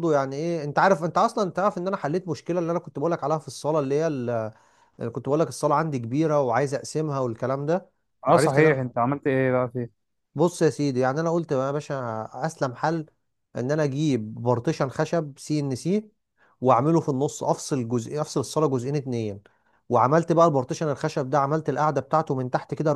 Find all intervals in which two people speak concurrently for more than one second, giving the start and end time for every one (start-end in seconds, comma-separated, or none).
none